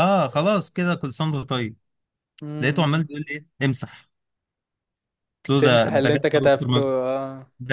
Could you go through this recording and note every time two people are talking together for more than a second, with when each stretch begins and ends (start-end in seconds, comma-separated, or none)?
5.6-6.9